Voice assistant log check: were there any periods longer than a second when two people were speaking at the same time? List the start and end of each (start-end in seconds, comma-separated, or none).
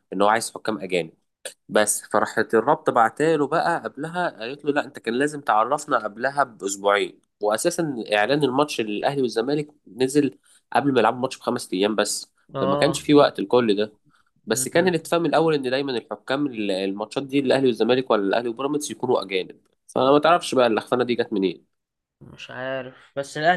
none